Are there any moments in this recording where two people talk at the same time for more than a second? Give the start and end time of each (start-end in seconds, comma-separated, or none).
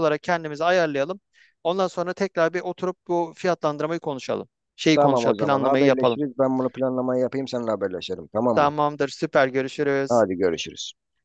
4.9-6.2